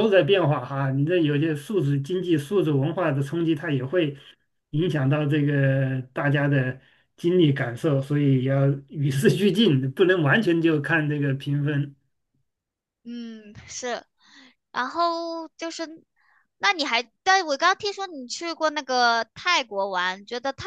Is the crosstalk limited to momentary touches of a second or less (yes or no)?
yes